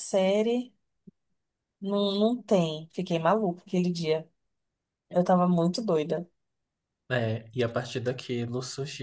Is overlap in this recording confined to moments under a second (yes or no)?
yes